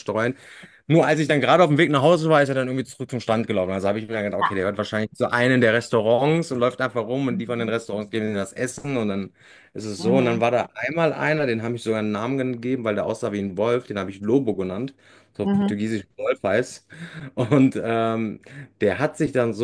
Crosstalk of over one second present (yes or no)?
no